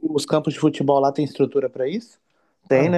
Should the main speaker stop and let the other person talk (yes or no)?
yes